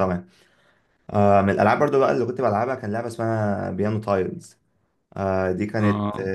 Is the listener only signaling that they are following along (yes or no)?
yes